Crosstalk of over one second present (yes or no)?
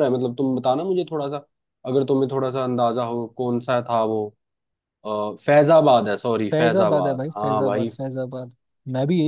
yes